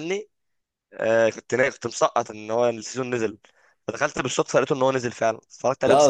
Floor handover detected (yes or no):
yes